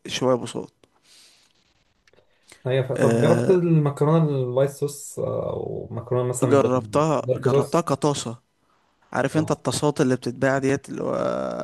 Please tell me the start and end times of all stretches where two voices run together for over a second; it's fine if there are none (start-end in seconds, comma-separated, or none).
6.4-7.9